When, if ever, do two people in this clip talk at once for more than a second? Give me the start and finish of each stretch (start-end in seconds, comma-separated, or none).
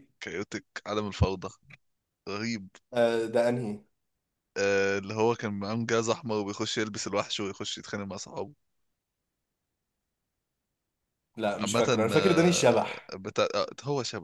11.6-13.2